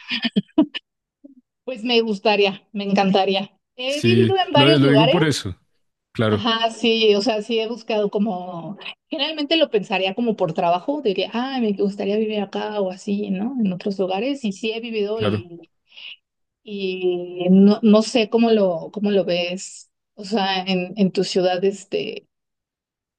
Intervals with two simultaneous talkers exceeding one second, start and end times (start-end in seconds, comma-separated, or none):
3.9-5.2